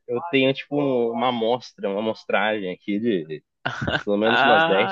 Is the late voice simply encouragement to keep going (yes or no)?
no